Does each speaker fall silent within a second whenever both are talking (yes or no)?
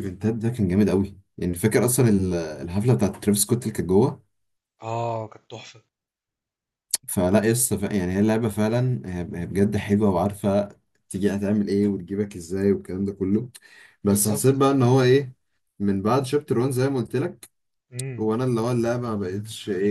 yes